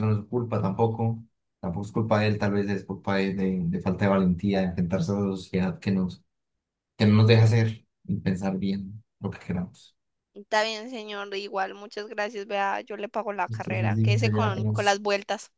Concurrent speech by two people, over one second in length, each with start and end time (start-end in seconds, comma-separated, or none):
13.5-15.0